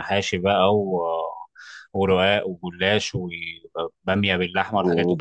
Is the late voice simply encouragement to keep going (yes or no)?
yes